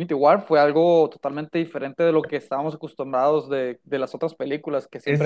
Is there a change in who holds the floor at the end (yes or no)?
yes